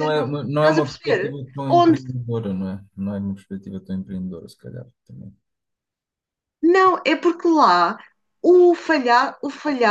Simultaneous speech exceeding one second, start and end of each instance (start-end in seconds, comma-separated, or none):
0.6-2.0